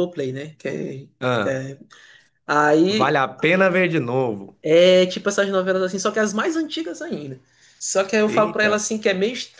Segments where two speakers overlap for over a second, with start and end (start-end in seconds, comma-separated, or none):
none